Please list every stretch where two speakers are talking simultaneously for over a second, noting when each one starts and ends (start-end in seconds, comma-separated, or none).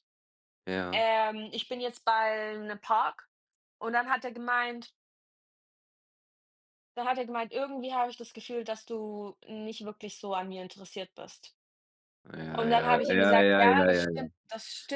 12.6-14.3